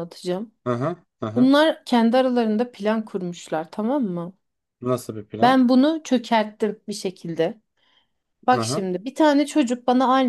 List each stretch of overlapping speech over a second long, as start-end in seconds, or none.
none